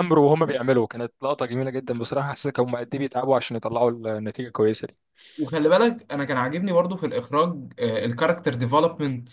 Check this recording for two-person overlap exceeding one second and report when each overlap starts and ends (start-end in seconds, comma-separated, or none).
none